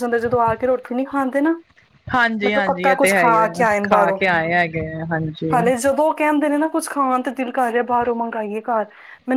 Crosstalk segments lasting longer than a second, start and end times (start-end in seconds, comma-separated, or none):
2.5-4.2